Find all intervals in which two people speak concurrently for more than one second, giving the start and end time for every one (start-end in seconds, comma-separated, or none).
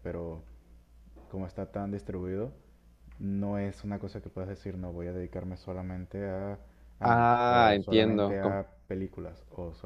7.0-8.6